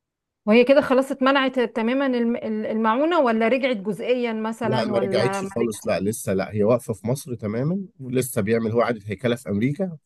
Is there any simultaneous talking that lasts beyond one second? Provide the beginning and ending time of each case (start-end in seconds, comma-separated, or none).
4.6-6.0